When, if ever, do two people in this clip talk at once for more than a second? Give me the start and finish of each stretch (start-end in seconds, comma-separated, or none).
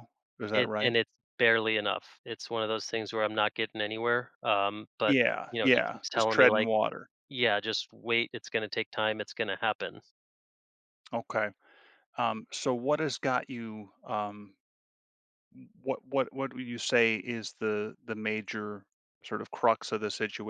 5.1-6.7